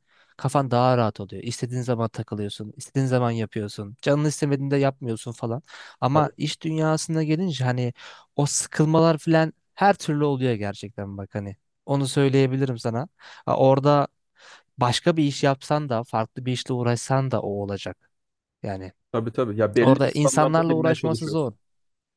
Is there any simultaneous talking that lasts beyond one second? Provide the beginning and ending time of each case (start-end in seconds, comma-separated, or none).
19.8-21.5